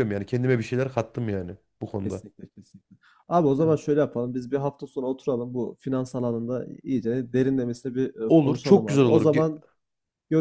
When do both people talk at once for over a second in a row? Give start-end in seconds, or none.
8.3-9.5